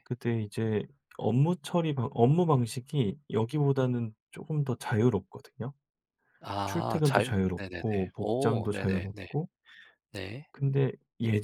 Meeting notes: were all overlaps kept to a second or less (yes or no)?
no